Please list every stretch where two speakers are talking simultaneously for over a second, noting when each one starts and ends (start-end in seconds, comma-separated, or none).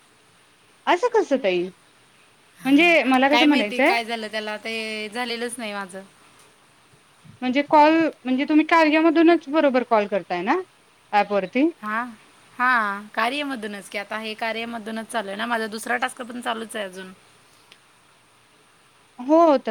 none